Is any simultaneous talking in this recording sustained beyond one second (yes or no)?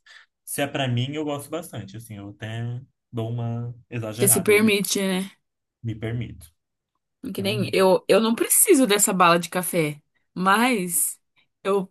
no